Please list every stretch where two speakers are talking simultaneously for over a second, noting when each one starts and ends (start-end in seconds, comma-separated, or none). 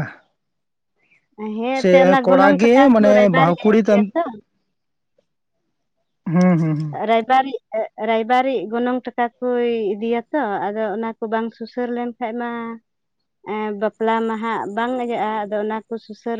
1.7-4.1